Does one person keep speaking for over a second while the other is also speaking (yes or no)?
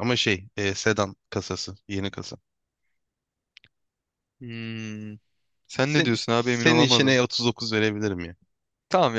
yes